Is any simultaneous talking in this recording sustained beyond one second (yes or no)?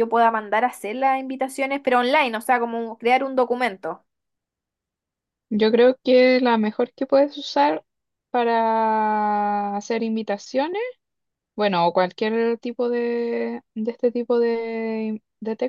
no